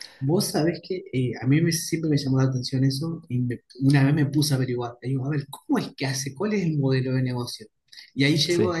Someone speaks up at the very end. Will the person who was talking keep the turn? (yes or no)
yes